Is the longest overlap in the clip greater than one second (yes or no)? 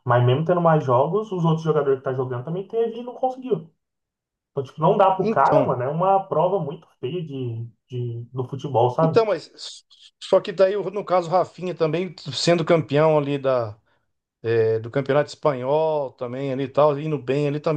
no